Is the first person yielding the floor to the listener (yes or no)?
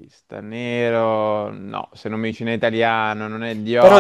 yes